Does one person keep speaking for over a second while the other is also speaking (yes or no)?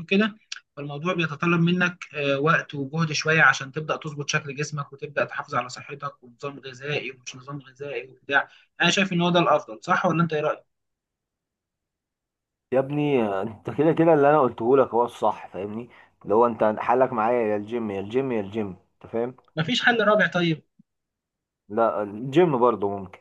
no